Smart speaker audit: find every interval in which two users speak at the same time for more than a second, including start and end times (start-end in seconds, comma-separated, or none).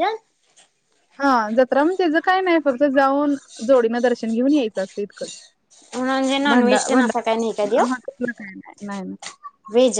6.5-7.8